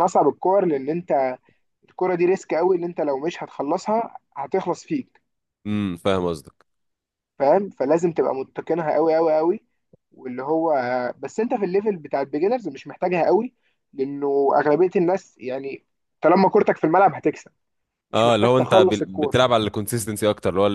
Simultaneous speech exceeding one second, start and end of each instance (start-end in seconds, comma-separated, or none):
18.1-19.3